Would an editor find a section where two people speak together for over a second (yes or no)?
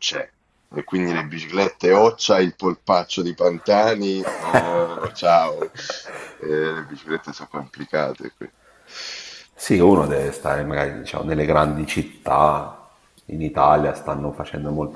no